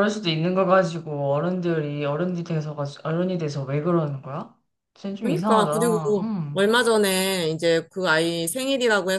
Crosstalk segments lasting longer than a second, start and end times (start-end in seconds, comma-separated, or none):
5.2-6.6